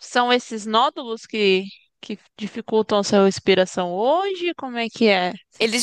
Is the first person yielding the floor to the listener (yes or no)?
yes